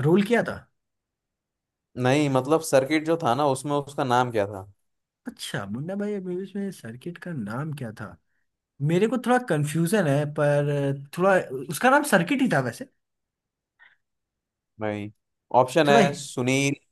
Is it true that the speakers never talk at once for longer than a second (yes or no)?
yes